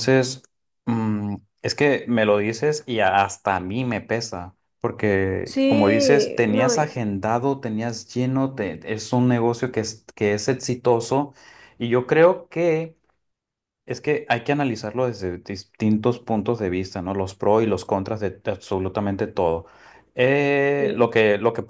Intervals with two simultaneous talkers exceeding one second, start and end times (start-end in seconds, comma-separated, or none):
5.5-6.9